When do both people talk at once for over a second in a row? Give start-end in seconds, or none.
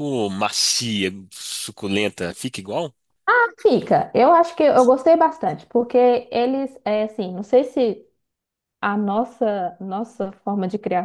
none